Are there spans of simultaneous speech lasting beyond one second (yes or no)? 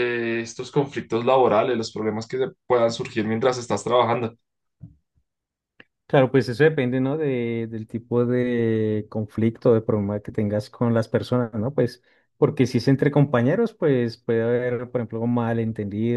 no